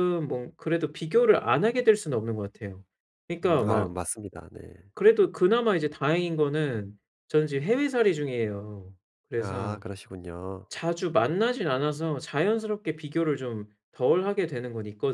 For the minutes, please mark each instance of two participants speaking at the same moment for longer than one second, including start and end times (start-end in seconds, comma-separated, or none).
none